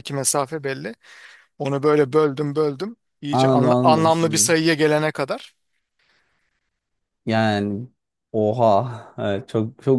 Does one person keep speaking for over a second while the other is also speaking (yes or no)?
yes